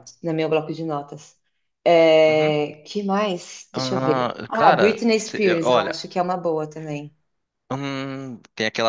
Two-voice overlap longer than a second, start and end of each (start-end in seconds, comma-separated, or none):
3.7-6.0